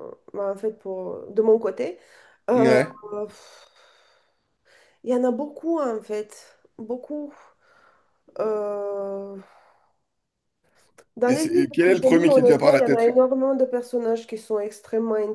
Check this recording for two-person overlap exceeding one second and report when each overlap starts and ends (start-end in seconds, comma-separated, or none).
11.3-13.1